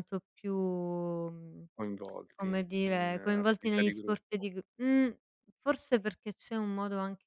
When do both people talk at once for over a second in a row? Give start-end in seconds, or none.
2.4-4.5